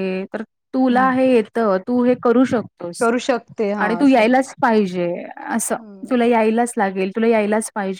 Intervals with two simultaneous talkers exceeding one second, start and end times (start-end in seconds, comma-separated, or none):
none